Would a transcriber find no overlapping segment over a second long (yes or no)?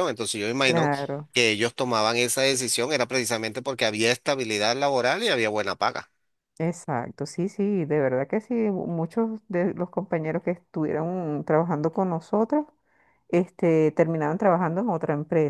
yes